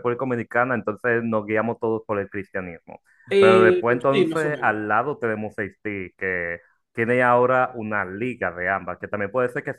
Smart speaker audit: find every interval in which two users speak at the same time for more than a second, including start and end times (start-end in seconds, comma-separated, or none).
3.4-4.8